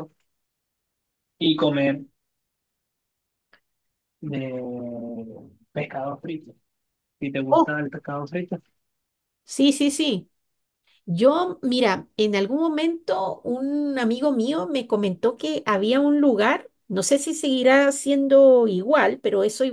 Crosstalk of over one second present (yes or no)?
no